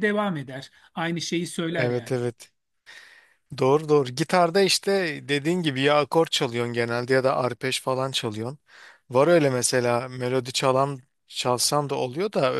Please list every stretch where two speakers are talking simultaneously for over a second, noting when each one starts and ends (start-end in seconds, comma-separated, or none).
none